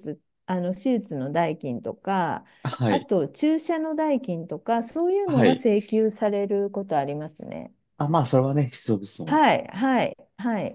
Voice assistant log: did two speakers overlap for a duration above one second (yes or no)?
no